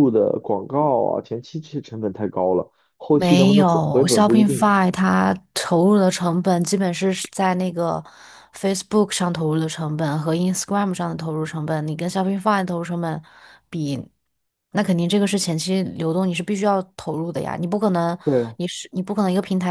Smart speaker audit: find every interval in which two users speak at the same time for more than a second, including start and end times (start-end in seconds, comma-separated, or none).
3.1-4.7